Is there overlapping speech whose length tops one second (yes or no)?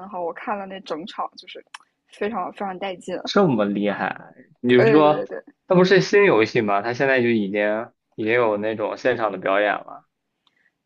no